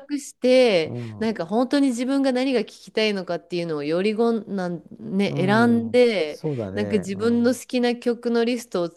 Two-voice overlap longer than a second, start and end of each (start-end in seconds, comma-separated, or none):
5.3-7.6